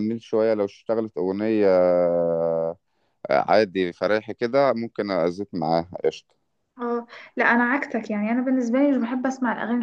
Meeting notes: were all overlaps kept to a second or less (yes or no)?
yes